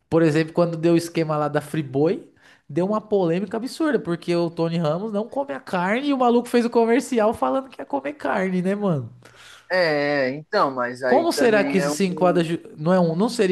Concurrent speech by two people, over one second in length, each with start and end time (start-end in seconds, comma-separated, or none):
11.1-12.3